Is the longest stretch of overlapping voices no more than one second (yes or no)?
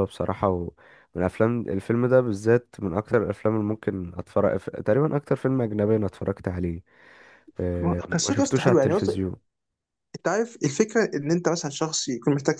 no